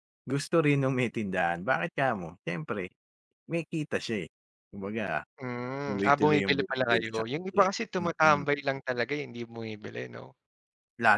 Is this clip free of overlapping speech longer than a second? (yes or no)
no